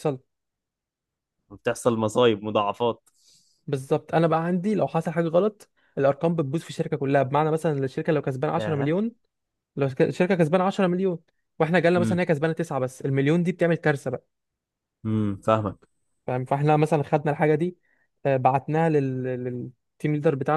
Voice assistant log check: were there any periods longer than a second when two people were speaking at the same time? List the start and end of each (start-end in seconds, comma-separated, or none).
none